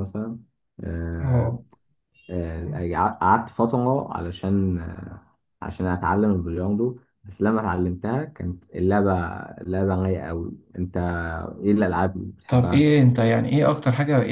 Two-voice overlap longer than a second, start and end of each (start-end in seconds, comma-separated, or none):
none